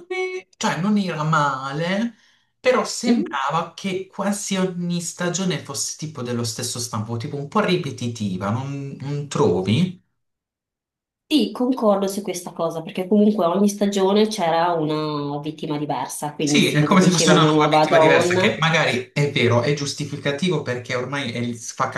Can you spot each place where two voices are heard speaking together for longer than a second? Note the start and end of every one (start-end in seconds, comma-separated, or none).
16.4-18.5